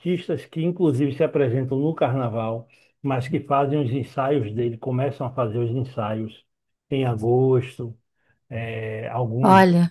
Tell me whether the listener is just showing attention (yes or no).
yes